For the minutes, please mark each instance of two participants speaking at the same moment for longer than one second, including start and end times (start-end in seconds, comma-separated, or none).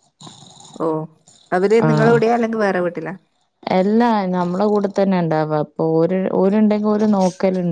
none